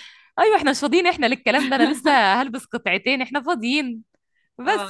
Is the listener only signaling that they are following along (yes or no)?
no